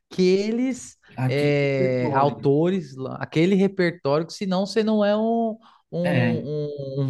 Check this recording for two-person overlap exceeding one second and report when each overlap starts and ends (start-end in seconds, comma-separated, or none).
1.2-2.5